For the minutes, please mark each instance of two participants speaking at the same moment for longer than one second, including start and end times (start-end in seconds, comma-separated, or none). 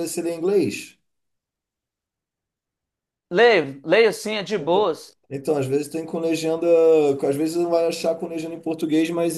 none